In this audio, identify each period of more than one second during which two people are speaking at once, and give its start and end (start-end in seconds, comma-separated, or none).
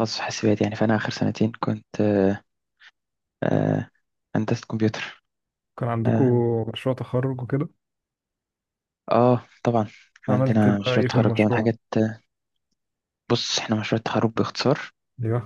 10.3-11.7